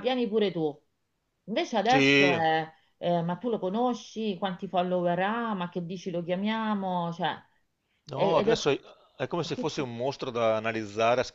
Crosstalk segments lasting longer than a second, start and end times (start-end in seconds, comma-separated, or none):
none